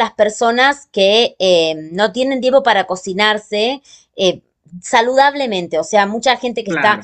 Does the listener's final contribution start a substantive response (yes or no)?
no